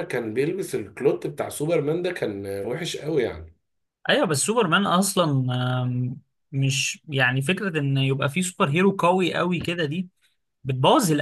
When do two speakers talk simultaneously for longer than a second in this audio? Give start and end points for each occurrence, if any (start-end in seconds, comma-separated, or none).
none